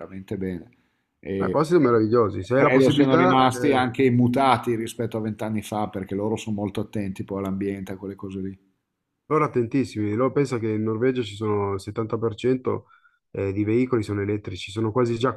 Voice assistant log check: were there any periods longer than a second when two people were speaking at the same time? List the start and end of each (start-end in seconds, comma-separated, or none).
2.5-3.9